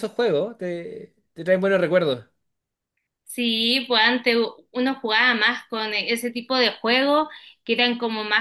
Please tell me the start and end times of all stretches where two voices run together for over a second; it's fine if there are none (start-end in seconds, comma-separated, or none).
none